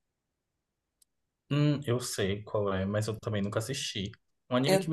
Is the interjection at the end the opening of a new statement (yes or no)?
no